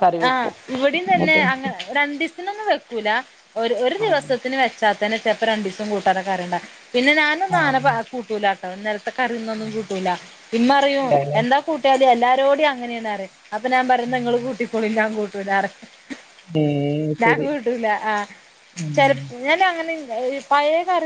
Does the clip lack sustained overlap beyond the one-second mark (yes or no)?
yes